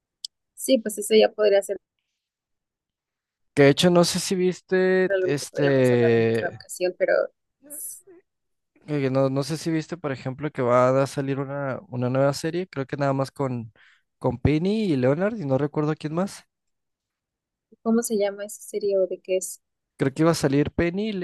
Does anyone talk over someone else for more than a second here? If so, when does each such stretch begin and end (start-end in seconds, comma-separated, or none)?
5.1-6.6